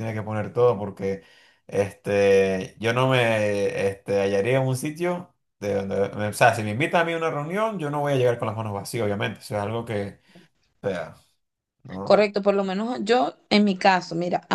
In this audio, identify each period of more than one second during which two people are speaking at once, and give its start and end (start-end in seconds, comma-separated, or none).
none